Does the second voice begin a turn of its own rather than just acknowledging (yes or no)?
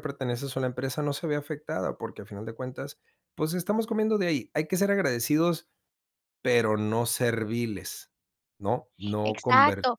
yes